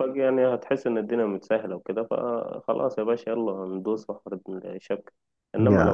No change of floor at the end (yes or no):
yes